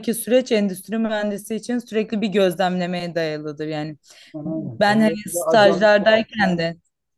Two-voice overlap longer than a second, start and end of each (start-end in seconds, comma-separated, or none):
4.5-5.9